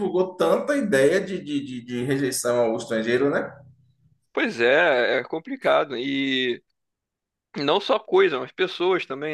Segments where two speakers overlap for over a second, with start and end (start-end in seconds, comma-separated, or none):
none